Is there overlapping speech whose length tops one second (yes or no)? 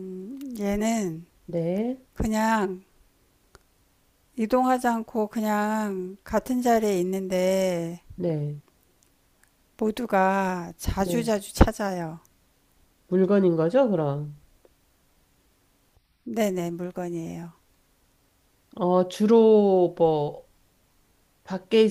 no